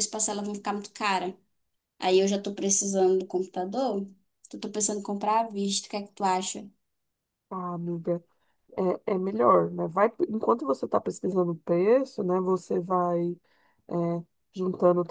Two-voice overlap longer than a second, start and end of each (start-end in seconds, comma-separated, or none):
none